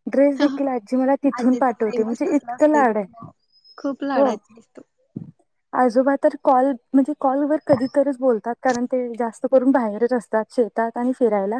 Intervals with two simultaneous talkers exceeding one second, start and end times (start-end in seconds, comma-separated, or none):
1.4-3.2